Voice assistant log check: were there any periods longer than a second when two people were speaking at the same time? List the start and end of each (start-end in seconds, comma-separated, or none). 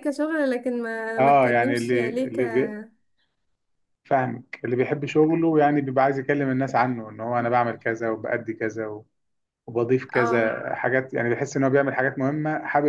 1.2-2.4